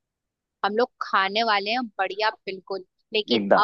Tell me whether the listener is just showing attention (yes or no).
yes